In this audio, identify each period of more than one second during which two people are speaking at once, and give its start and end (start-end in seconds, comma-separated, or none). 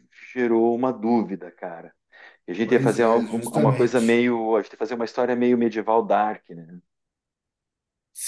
2.6-4.2